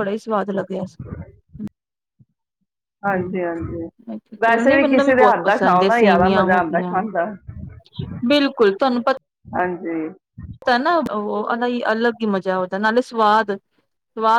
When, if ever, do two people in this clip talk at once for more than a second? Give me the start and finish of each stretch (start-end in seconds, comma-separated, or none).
4.4-7.0